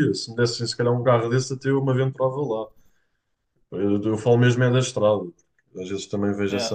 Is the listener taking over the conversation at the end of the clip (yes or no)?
no